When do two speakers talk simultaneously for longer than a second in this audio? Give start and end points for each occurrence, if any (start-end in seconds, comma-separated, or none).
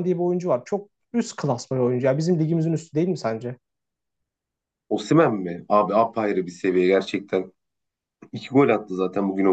none